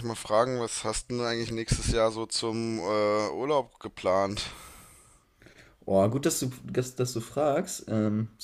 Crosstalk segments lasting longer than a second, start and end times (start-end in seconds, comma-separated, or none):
none